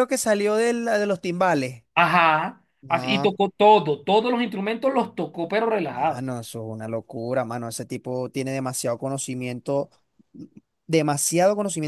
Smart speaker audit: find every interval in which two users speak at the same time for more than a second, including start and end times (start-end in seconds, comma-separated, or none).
none